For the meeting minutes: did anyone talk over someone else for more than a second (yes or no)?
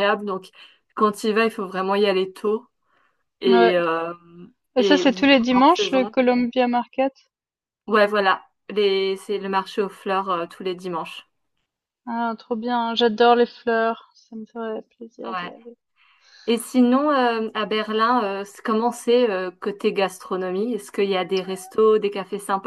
yes